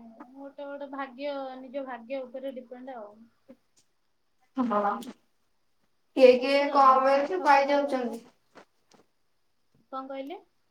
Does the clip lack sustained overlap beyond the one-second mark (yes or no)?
no